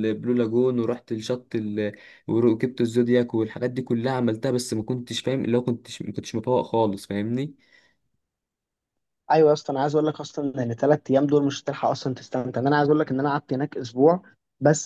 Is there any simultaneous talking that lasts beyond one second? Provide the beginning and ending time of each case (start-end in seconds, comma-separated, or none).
none